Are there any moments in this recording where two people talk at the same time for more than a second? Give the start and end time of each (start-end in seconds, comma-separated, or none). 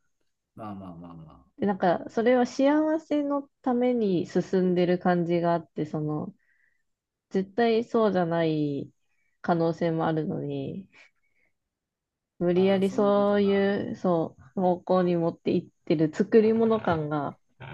12.5-13.8